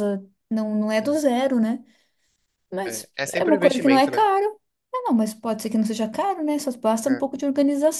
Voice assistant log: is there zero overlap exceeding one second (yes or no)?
no